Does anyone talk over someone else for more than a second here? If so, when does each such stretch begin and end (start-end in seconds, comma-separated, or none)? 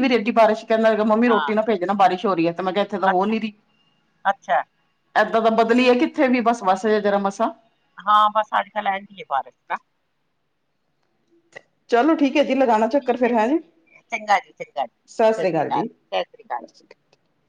15.3-16.6